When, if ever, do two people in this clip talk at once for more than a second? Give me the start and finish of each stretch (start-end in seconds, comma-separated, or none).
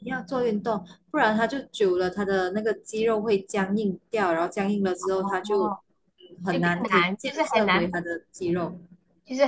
6.5-7.9